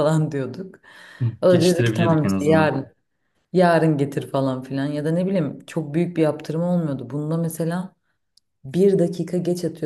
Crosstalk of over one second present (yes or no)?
yes